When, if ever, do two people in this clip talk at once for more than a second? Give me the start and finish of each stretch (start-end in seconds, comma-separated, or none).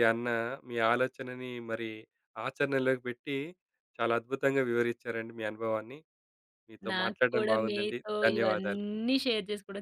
6.9-8.8